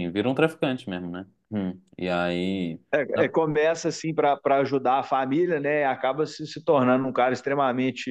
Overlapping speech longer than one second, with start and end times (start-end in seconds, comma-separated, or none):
none